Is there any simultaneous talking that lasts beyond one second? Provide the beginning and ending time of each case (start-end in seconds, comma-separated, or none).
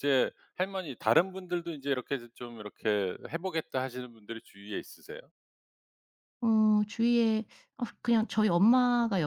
none